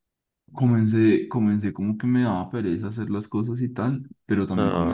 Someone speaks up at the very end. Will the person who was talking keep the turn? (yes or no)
yes